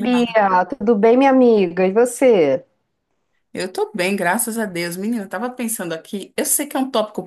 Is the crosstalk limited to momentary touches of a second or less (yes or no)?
yes